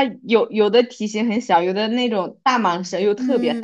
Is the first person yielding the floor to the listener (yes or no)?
yes